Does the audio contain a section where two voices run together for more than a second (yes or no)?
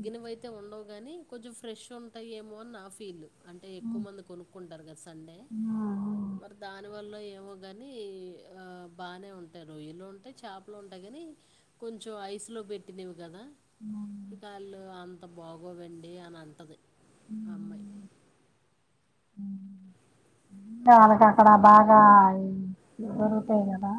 no